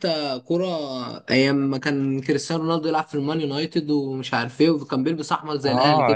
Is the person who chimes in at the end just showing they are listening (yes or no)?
no